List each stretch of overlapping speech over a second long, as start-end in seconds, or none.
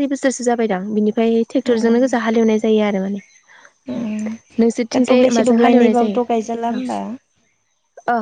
4.9-6.8